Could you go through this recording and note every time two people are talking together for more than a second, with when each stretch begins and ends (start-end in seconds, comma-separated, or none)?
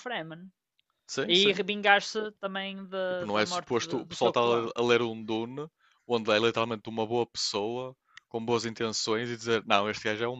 3.1-4.7